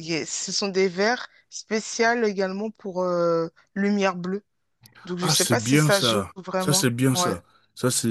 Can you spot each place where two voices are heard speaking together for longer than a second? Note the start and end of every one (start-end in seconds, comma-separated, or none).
5.2-7.3